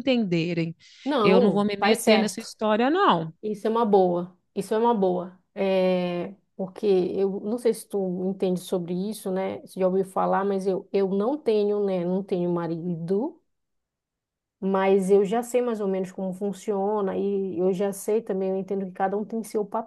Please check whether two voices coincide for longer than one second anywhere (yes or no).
yes